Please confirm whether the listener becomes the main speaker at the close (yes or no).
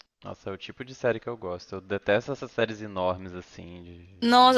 yes